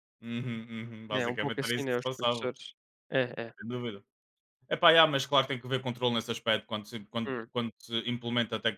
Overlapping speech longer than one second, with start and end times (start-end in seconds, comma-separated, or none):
1.1-2.5